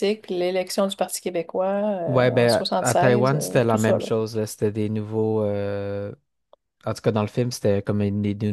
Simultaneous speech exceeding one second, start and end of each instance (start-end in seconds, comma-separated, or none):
2.1-4.1